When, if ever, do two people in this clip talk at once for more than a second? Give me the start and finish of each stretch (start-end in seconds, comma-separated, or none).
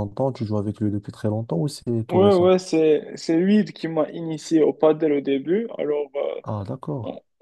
none